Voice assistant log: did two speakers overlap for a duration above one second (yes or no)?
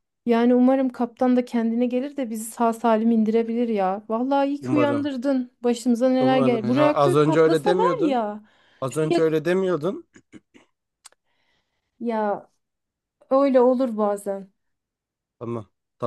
yes